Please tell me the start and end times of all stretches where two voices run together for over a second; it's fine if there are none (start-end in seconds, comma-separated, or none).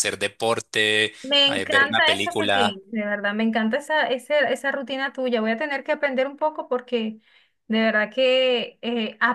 1.4-2.8